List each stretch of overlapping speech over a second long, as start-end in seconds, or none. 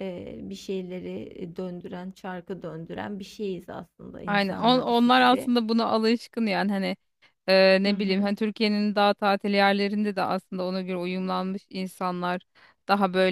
4.3-5.5